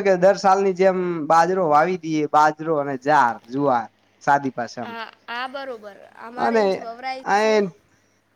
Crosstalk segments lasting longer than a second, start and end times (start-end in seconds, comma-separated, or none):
none